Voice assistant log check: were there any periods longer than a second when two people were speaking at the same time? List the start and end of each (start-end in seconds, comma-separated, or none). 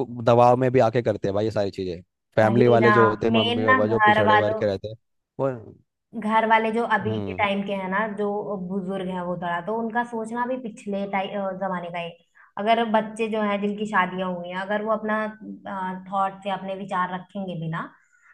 2.4-4.6